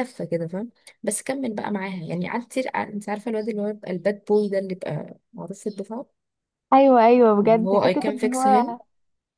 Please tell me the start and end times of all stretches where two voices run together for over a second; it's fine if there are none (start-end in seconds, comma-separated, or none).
7.4-8.8